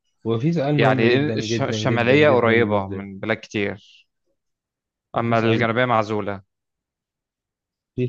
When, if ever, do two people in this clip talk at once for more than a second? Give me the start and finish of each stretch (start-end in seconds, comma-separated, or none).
0.8-3.1